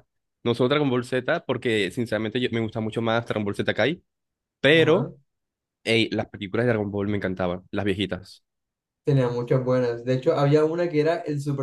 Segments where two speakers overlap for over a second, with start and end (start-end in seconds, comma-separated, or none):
none